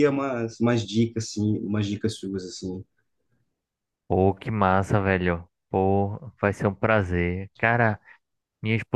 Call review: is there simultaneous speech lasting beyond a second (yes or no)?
no